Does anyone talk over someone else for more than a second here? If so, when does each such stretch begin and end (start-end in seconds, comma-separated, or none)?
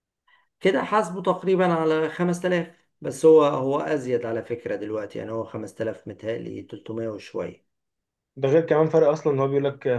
none